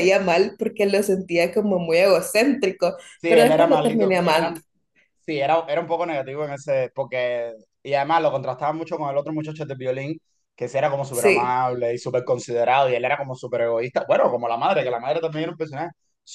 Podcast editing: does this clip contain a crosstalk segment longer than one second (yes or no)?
yes